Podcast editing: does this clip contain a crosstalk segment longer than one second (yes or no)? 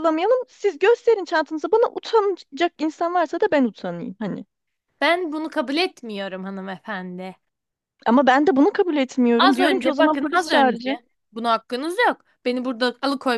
yes